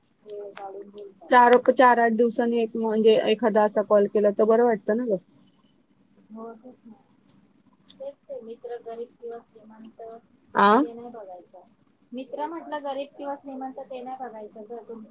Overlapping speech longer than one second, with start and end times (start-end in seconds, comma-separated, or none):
none